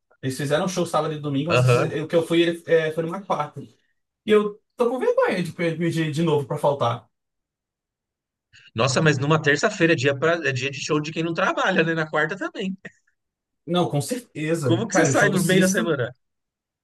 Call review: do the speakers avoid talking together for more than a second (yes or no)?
no